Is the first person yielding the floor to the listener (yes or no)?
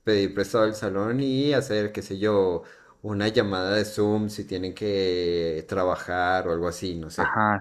yes